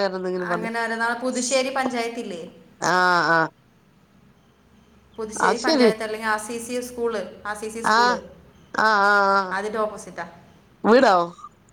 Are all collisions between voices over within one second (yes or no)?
yes